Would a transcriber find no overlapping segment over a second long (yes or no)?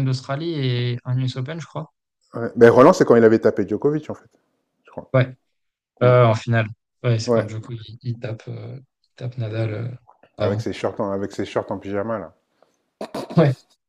yes